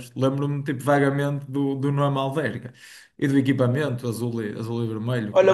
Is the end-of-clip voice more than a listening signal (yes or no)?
yes